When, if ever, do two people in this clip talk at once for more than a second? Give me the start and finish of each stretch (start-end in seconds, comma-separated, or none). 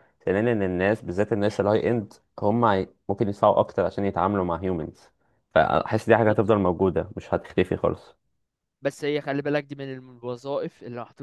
none